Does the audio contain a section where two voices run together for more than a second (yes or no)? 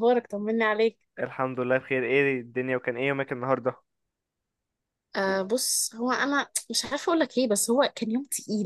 no